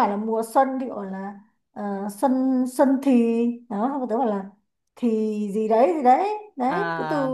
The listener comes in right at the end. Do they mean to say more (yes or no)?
no